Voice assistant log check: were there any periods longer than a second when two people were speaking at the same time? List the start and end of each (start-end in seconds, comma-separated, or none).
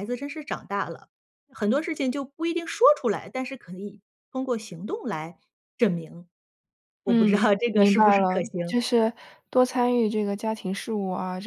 7.1-8.8